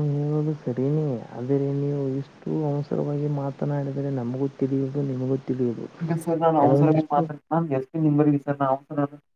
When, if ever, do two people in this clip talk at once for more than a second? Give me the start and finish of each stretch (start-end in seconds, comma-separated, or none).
none